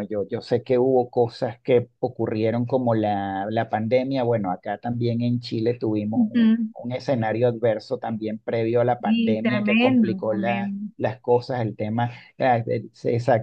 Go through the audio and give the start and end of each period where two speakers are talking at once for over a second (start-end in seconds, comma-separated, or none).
9.0-10.9